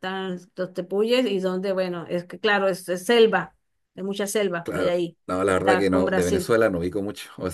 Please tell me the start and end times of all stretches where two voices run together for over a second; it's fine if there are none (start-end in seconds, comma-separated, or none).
4.6-6.5